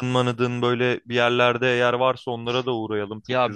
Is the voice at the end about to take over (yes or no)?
yes